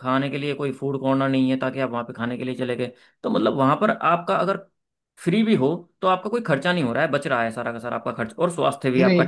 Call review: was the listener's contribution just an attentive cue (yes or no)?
yes